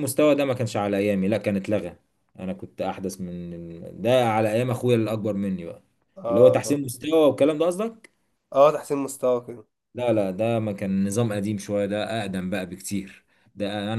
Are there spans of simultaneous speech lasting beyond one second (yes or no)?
no